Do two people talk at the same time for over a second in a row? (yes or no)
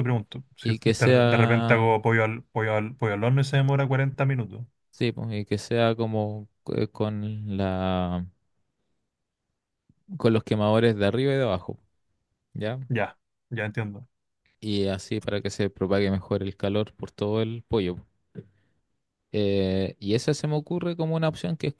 yes